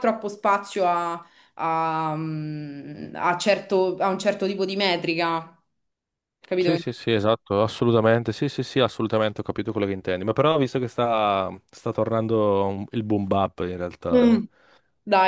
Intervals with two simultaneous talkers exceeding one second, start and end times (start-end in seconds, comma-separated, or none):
none